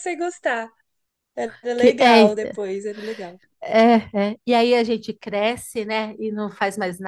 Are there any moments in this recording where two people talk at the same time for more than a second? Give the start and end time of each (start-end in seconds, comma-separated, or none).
none